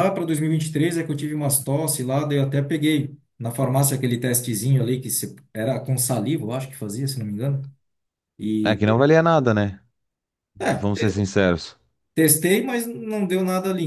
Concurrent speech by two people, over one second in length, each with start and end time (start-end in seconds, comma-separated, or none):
none